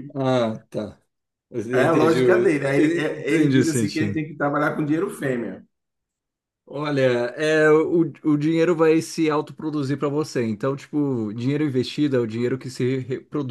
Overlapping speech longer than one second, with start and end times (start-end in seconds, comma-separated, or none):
1.7-4.2